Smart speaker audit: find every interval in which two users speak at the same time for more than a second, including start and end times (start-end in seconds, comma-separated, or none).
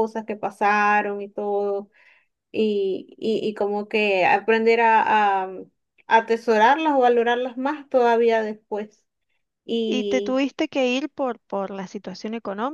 none